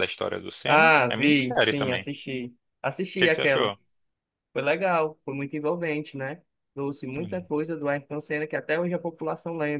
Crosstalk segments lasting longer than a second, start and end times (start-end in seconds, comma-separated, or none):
0.6-2.1